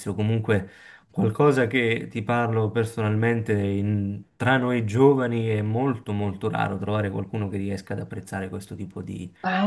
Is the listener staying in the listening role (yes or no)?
no